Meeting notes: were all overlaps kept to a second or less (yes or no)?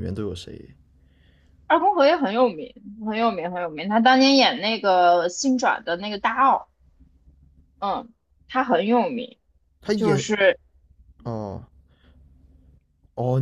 yes